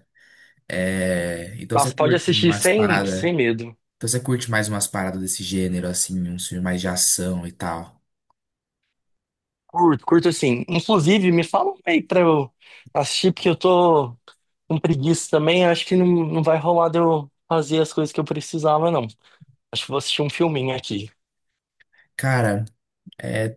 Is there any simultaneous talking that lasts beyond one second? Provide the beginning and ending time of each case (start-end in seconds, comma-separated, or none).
1.7-3.3